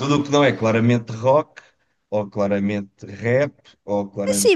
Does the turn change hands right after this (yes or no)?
yes